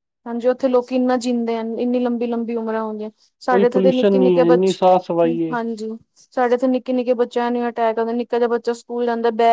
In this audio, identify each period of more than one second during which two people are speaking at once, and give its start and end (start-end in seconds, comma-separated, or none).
3.5-4.9